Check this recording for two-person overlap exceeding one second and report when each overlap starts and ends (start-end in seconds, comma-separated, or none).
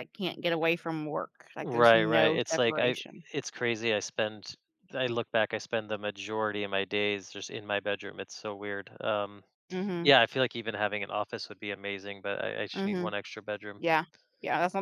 1.6-3.0